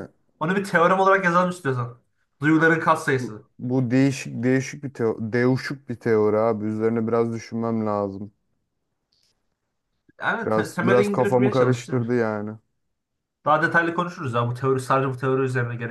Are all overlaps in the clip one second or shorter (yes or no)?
no